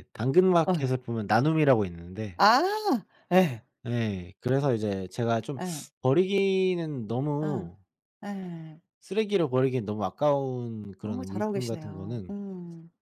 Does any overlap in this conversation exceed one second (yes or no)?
yes